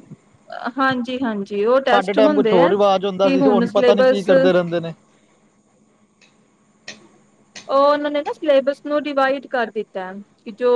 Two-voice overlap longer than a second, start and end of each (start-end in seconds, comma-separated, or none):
3.4-4.6